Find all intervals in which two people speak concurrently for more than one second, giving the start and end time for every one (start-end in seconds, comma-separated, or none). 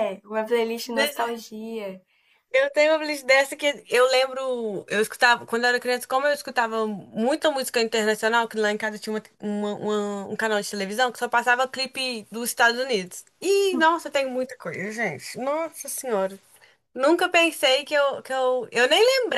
none